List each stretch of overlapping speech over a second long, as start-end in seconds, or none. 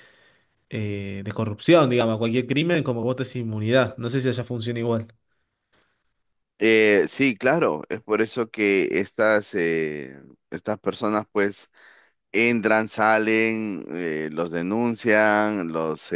none